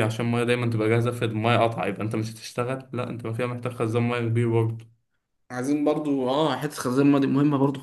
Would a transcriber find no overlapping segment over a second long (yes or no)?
yes